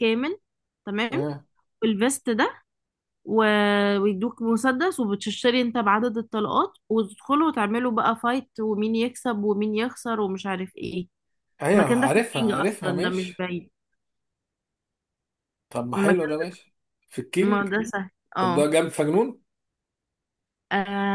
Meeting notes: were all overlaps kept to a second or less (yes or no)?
no